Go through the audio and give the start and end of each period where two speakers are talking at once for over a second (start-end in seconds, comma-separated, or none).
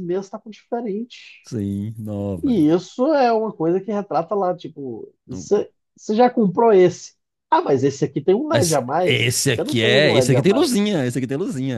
8.5-10.7